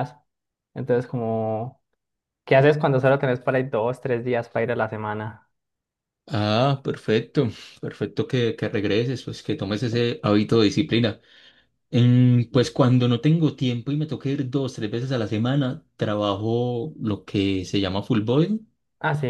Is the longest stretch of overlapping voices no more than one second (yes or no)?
yes